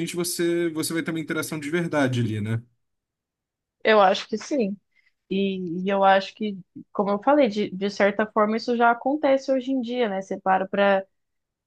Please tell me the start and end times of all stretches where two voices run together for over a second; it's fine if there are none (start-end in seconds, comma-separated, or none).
none